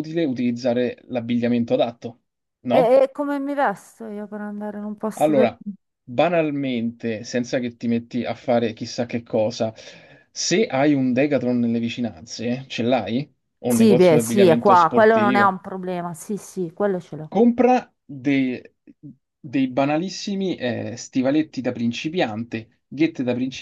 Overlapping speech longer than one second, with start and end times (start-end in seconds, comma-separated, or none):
13.7-15.6